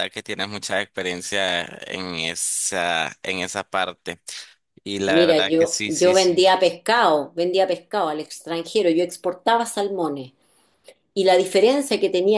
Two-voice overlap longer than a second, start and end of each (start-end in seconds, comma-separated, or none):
5.1-6.4